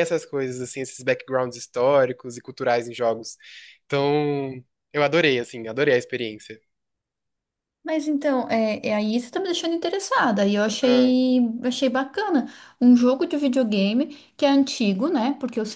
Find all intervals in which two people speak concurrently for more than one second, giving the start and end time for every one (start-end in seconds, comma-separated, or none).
none